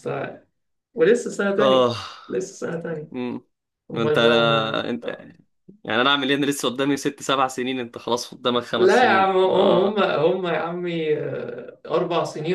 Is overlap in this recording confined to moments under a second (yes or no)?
no